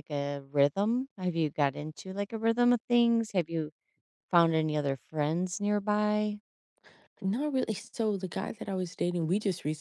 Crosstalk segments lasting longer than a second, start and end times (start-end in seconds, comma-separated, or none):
none